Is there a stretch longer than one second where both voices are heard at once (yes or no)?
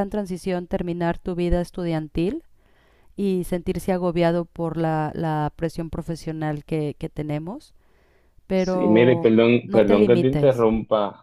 yes